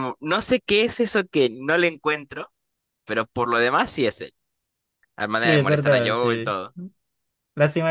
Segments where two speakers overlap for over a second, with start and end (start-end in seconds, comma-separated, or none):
5.3-6.6